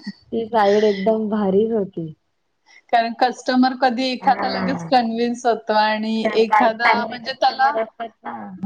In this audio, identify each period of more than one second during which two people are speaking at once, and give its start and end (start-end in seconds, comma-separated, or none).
6.4-7.7